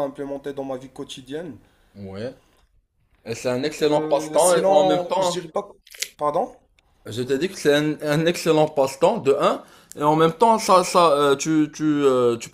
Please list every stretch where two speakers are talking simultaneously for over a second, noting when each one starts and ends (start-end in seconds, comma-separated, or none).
3.8-5.4